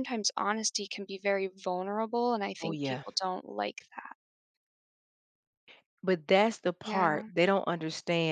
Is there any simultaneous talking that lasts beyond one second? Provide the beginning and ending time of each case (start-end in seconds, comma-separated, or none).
none